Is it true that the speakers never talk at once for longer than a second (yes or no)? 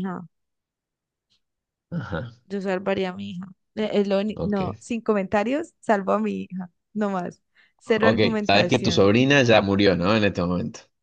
no